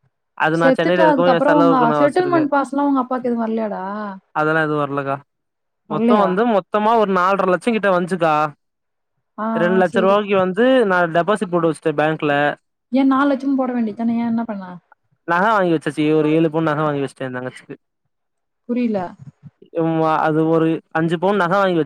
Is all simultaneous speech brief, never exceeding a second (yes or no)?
no